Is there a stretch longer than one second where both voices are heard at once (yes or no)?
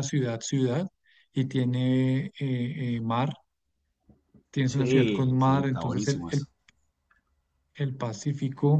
yes